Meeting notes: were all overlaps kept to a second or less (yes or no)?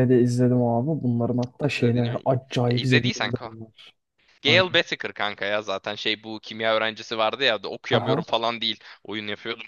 no